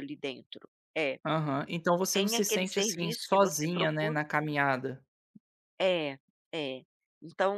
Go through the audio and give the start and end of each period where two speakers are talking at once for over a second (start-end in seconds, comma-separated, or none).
2.1-4.2